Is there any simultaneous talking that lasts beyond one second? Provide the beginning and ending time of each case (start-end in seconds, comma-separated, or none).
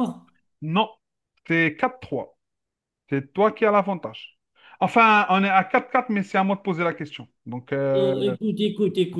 none